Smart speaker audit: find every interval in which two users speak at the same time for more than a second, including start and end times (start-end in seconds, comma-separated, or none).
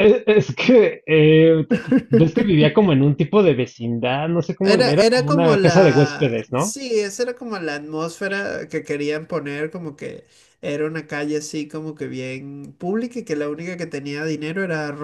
4.6-6.8